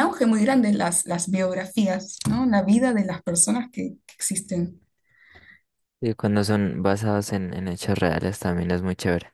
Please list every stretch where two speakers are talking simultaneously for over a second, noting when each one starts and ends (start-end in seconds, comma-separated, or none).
none